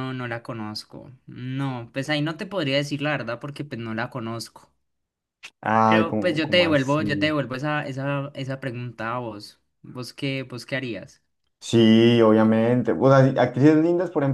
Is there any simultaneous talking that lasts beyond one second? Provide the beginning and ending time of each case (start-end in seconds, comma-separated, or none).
5.8-7.3